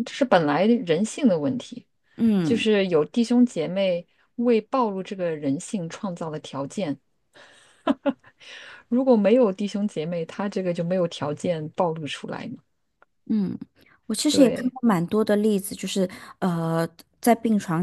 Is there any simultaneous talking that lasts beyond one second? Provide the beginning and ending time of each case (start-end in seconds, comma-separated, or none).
none